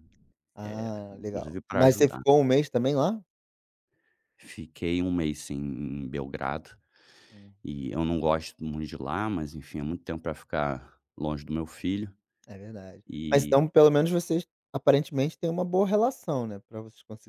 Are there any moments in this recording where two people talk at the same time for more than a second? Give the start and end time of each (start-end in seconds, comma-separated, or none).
0.6-2.2